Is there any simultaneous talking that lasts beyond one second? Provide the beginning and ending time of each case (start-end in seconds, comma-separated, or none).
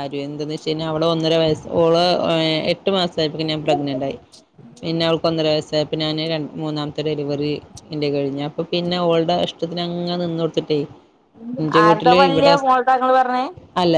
none